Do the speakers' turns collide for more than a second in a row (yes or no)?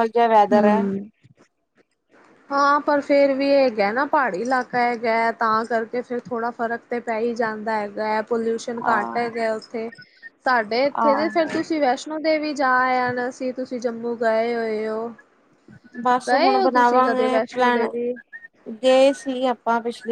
no